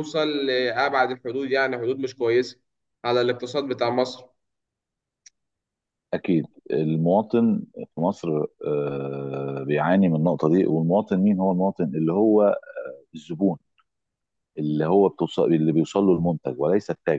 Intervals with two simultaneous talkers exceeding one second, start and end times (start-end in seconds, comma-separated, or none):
none